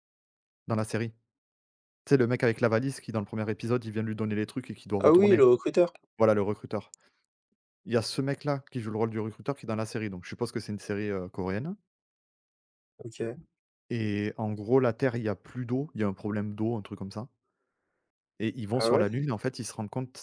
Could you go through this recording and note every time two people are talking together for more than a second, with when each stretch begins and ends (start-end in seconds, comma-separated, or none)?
none